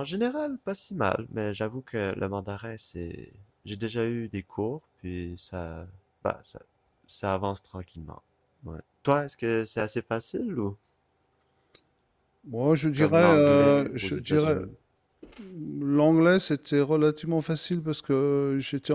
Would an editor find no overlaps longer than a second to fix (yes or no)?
no